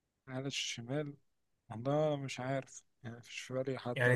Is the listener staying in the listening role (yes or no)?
no